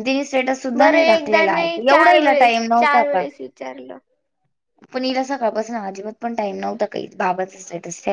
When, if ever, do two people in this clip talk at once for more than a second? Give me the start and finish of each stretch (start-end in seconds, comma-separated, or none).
0.8-3.2